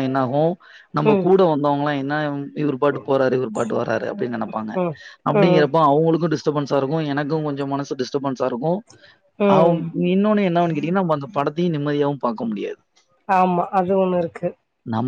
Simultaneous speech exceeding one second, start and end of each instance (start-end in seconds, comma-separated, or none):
none